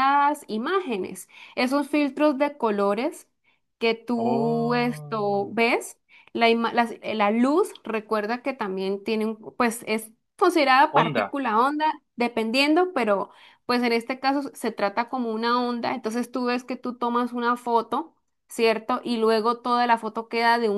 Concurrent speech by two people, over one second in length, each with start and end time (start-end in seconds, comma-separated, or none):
4.2-5.5